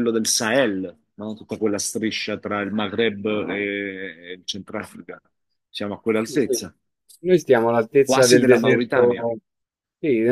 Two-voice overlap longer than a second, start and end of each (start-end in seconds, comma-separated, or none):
8.0-9.3